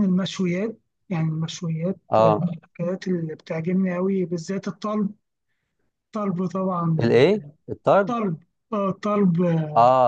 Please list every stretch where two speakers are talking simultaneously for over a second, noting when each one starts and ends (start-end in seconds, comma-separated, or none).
none